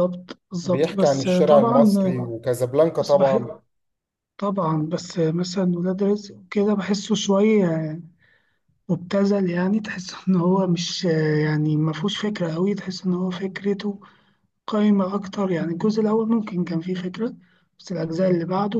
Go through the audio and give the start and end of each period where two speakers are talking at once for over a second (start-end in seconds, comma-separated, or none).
0.6-1.9